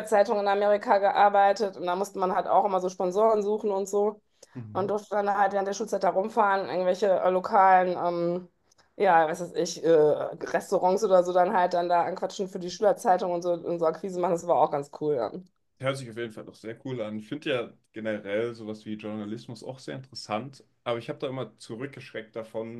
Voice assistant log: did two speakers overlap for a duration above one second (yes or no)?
no